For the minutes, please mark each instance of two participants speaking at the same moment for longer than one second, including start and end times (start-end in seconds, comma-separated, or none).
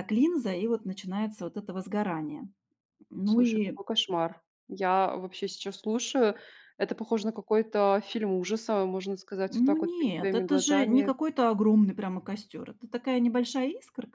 9.5-11.1